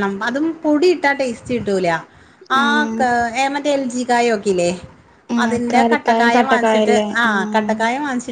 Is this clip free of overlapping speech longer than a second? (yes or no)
no